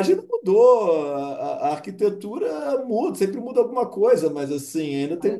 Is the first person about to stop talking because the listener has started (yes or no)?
no